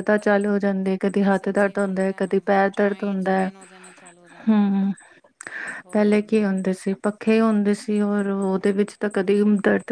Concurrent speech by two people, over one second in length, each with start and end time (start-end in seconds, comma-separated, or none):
1.3-3.5